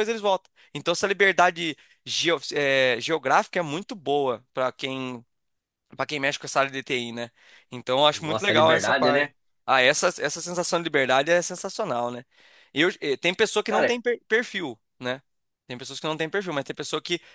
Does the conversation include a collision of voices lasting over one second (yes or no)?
yes